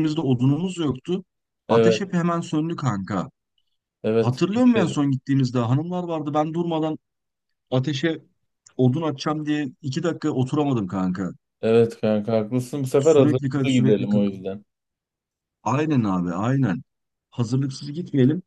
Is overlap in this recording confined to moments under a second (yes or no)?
no